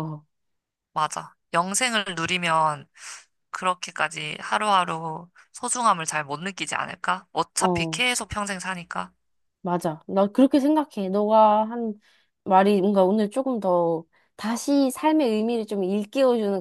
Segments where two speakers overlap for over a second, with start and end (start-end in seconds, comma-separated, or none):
none